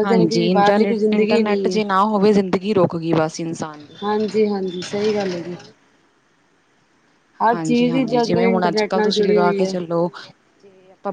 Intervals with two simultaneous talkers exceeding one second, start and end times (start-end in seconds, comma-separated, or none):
7.5-9.7